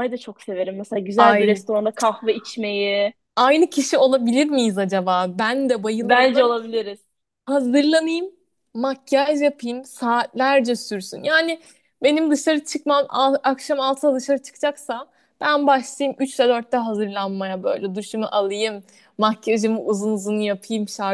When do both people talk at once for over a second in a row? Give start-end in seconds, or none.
none